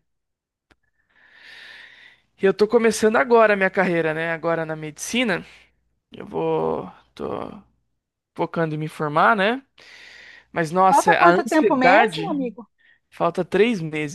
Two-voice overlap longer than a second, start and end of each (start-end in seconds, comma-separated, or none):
10.8-12.4